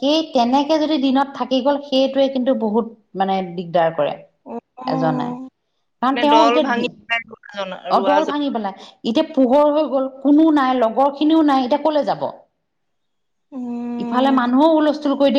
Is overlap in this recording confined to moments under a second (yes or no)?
no